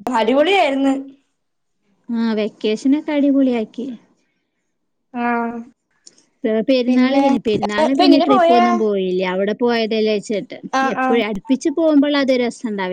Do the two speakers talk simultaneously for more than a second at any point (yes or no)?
yes